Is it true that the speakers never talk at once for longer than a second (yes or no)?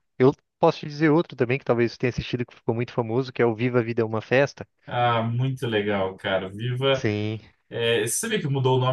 yes